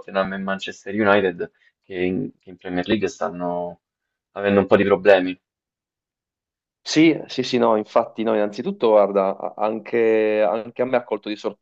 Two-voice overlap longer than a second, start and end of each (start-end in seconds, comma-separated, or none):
none